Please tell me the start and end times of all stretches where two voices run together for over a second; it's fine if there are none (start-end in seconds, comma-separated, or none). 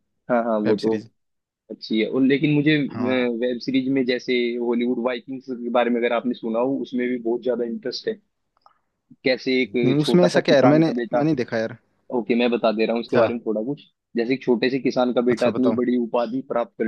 9.8-11.2